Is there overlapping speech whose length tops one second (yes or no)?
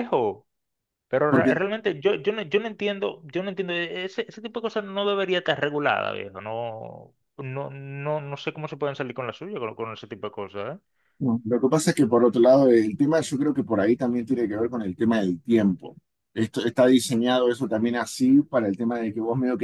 no